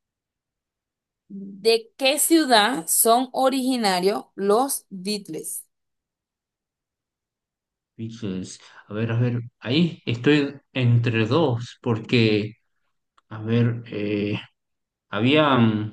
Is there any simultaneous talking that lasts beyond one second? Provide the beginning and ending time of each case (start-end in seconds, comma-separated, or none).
none